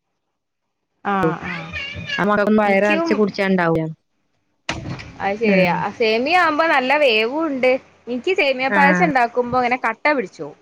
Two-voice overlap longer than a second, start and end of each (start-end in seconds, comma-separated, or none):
none